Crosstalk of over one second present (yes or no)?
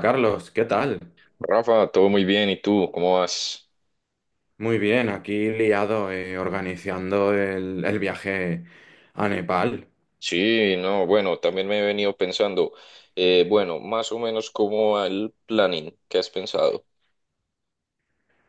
no